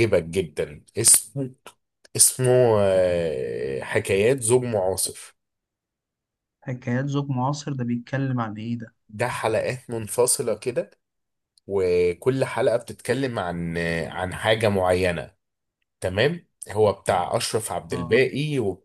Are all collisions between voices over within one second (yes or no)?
yes